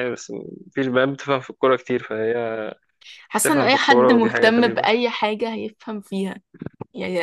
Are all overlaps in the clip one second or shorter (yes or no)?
no